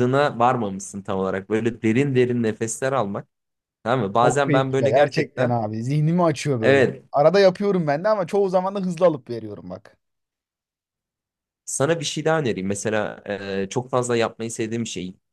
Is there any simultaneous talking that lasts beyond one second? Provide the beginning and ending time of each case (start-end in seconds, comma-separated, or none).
4.2-5.5